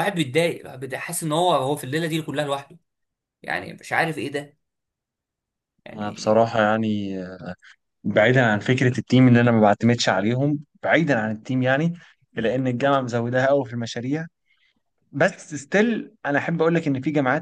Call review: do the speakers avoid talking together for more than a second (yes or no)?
yes